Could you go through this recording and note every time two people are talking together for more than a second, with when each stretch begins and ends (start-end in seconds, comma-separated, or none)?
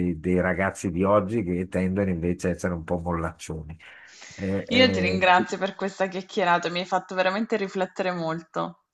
none